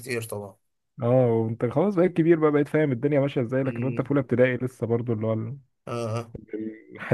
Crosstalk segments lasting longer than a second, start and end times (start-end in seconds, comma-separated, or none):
none